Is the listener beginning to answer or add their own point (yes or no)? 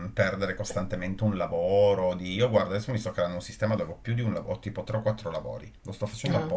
no